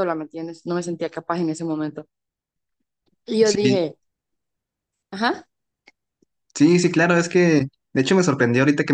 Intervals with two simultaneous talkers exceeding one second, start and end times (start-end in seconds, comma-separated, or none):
none